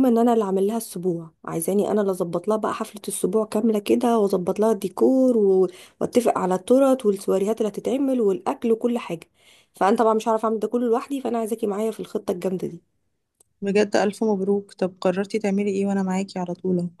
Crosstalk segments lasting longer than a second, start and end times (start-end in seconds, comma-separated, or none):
none